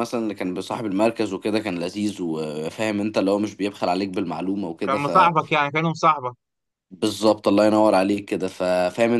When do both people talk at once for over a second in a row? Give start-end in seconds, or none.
none